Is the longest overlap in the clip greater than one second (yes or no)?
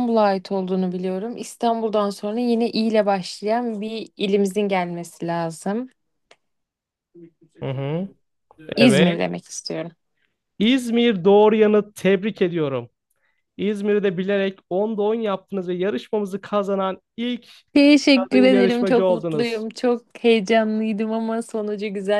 yes